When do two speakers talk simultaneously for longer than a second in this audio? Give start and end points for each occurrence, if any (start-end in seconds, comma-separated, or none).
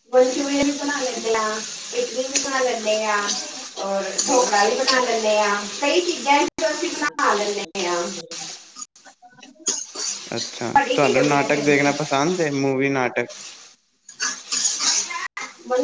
10.6-11.9